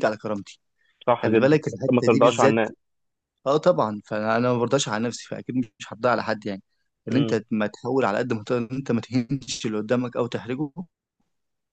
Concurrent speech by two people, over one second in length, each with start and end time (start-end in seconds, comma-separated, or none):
1.2-2.6